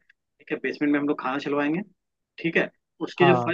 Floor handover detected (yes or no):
no